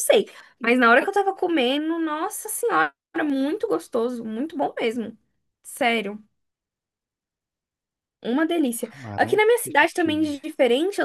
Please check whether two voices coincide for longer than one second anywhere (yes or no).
yes